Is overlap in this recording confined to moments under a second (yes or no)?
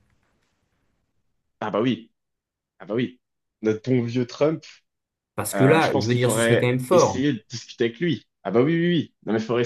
no